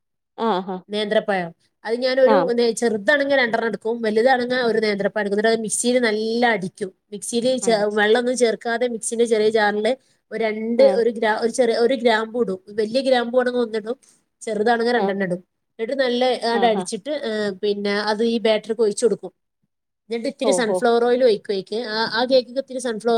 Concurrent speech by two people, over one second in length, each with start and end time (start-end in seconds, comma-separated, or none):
none